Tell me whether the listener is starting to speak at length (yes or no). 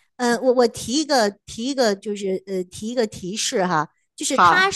no